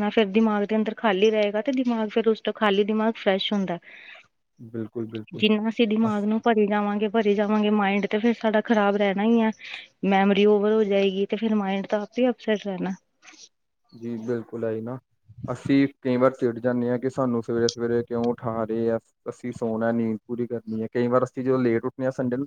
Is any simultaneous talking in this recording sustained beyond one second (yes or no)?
no